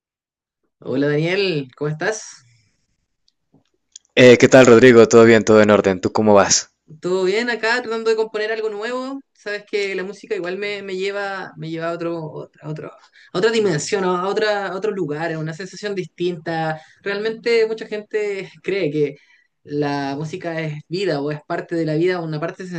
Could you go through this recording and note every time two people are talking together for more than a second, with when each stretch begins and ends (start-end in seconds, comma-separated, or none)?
none